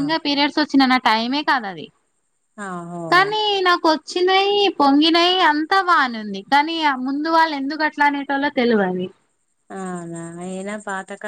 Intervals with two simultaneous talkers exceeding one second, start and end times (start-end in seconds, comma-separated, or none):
none